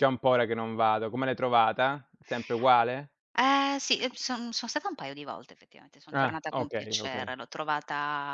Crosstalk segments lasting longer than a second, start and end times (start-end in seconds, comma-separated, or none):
6.1-7.3